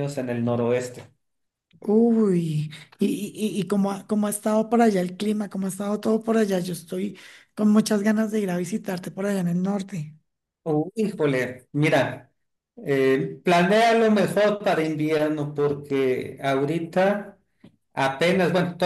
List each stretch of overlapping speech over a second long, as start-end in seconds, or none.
none